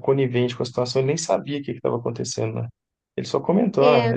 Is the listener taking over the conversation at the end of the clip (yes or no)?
no